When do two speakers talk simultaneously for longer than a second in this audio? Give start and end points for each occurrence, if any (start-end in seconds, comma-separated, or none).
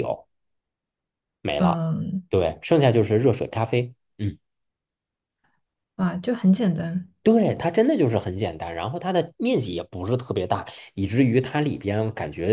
none